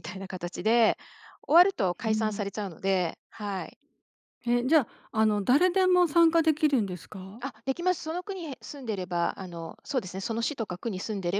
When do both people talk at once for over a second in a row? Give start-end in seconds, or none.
none